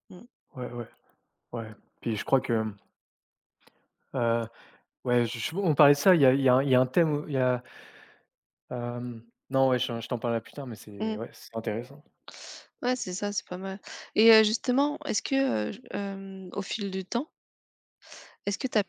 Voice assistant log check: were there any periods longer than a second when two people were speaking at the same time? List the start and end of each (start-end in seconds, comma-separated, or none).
none